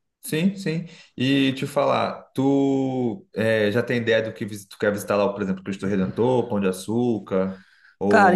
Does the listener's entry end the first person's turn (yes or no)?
yes